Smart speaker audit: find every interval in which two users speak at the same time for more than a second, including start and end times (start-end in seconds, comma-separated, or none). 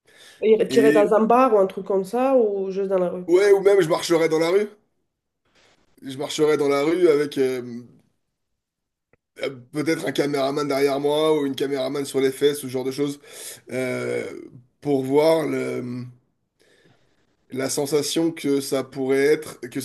none